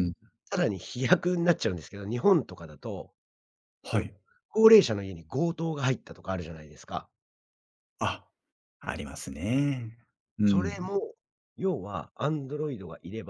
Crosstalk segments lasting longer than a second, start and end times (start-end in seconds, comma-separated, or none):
none